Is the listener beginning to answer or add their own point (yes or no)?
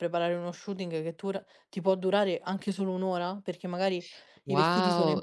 yes